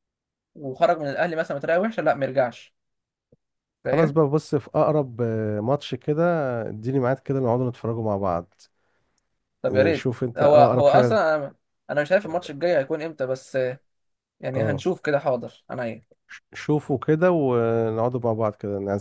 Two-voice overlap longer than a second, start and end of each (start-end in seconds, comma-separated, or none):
9.7-11.2